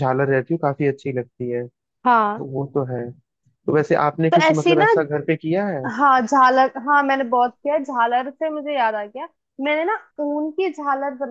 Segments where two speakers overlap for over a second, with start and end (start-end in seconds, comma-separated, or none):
none